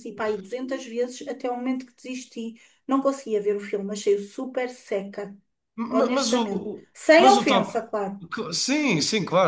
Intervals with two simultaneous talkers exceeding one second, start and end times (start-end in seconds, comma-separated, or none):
5.9-7.8